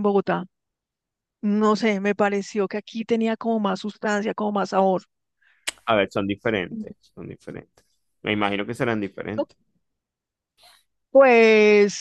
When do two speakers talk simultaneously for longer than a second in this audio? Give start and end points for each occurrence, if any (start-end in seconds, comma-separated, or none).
none